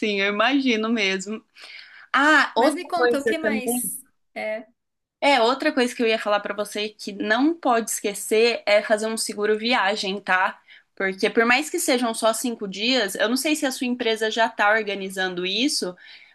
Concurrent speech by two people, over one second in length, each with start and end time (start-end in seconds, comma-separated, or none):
2.6-3.8